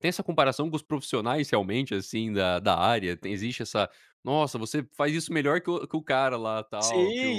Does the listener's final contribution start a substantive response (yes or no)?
yes